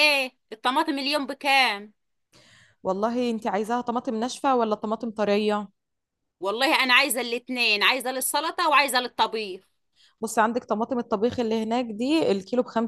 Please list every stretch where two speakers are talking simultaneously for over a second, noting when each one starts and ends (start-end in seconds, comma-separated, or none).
none